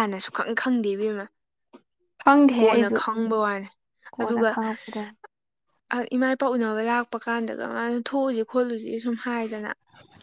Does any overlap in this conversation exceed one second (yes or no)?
no